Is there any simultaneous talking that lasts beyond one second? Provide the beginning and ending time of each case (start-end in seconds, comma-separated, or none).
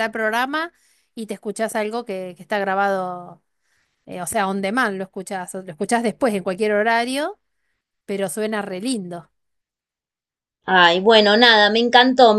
none